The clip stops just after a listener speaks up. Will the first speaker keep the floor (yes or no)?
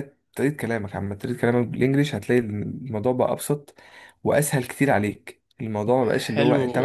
no